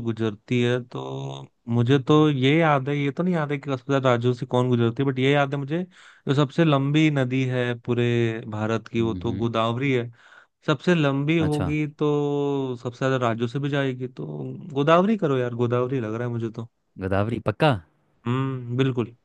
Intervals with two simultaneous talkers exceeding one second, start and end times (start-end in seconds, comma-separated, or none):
none